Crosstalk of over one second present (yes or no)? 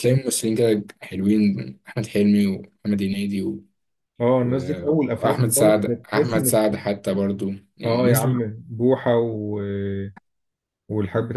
yes